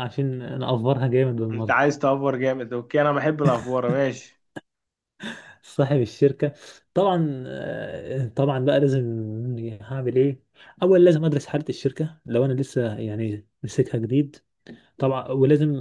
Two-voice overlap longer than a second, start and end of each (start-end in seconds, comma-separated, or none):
none